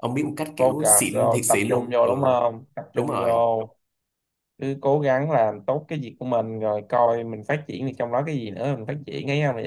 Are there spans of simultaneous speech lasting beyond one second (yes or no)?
yes